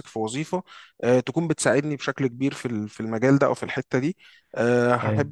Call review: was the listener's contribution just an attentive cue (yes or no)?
yes